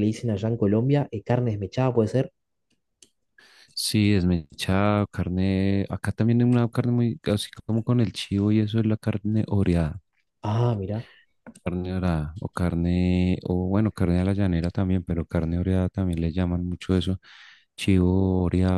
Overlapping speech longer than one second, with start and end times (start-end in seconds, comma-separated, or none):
none